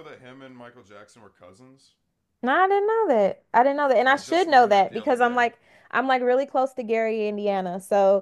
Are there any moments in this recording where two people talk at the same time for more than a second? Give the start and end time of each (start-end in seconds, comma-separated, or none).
4.0-5.4